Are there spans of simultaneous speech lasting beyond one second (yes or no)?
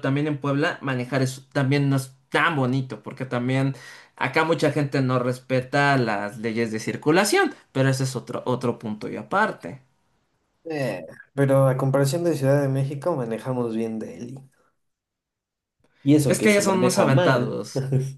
yes